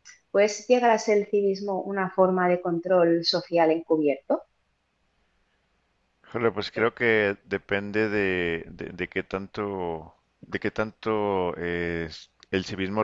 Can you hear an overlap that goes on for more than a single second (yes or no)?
no